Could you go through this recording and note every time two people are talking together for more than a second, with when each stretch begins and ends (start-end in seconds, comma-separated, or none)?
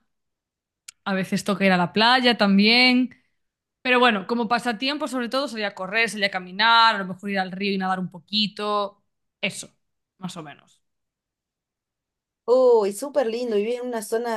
none